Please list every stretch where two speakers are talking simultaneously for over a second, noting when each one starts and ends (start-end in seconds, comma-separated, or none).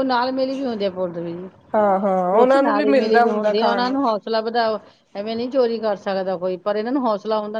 2.4-3.9